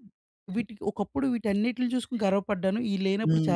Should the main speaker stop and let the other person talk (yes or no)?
yes